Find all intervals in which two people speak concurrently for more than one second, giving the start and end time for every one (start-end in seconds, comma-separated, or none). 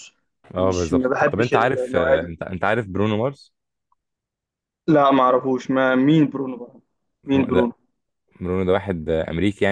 0.6-2.3